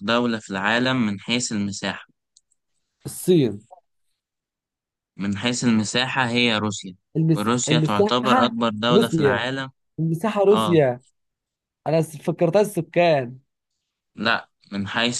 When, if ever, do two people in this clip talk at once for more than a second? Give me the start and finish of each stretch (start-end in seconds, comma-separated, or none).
7.4-9.5